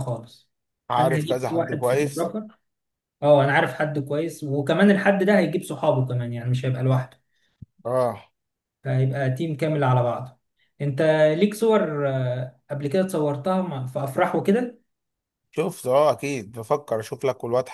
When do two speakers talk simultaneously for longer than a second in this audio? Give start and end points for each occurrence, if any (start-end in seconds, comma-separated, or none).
1.0-2.3